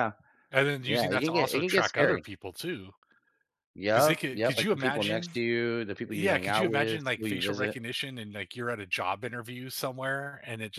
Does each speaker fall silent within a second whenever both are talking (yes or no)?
no